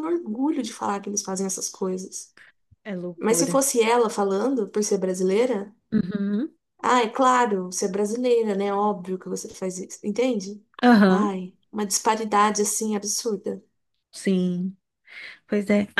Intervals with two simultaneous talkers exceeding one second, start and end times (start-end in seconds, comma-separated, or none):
none